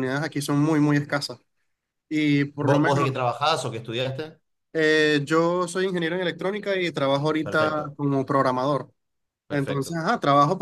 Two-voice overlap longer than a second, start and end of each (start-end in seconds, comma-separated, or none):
none